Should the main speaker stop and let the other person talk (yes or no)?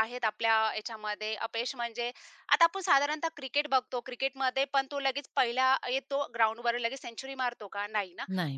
no